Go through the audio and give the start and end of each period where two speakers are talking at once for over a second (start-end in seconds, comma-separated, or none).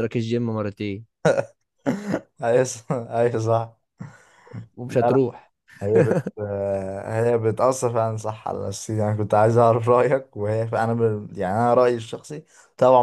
none